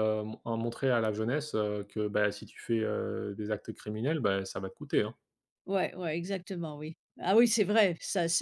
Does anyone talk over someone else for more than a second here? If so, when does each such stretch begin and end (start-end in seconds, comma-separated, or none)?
none